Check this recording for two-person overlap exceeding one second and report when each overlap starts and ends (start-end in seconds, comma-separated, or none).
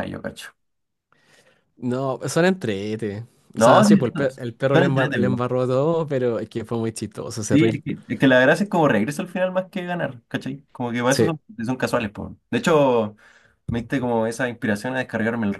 3.6-5.4